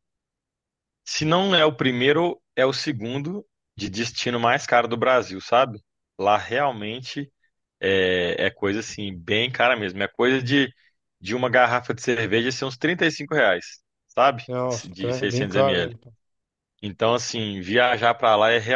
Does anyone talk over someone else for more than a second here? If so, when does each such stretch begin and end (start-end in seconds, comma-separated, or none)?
14.5-16.0